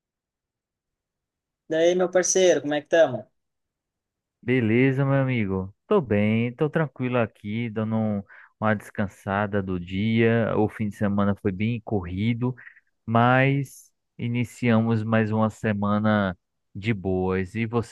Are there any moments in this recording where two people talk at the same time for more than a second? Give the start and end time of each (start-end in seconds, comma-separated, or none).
none